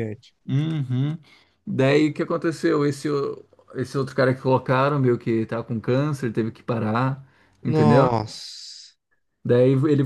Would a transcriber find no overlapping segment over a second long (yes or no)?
yes